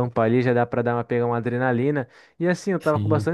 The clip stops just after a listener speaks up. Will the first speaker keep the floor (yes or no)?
yes